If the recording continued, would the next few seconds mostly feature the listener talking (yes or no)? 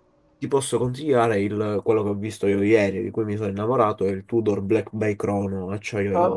yes